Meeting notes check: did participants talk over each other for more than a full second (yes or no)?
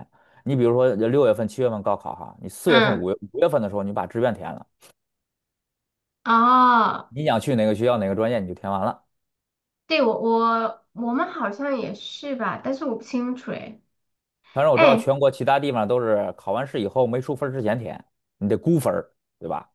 no